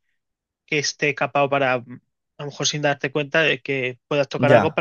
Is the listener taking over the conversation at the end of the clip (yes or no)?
no